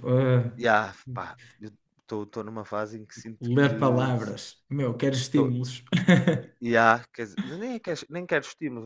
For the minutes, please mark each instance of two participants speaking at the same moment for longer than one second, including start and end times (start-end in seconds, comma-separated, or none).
none